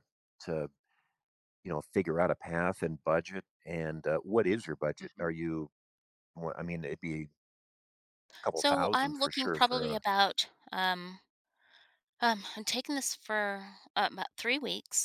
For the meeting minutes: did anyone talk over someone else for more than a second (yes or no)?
yes